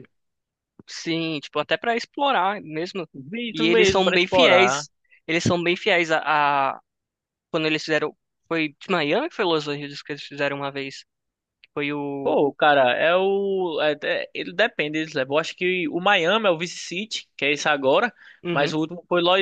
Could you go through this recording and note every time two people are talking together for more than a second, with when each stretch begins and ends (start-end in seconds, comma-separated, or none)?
3.5-4.8